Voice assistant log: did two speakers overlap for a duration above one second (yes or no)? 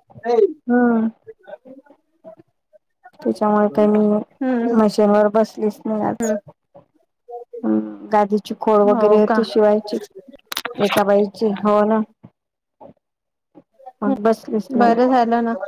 no